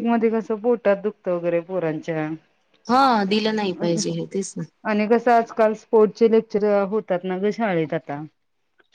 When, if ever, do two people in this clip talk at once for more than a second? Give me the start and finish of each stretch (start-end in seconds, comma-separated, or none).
none